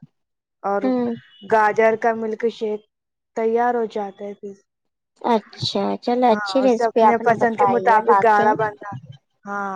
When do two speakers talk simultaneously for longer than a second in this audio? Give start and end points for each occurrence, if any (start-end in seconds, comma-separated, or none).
6.3-8.5